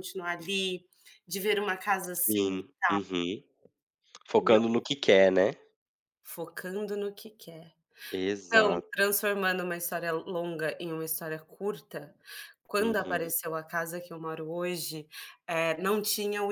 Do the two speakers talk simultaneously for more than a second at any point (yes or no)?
no